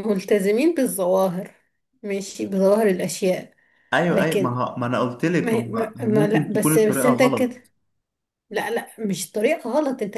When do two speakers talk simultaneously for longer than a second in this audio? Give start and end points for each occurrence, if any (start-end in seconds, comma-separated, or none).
5.4-7.6